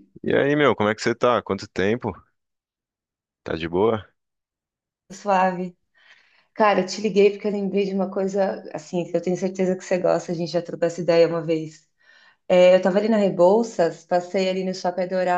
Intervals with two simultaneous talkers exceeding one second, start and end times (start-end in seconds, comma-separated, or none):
none